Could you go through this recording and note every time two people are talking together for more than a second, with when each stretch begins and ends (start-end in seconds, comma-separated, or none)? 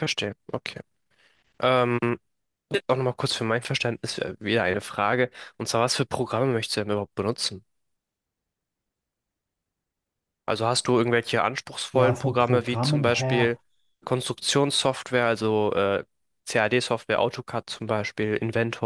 11.9-13.5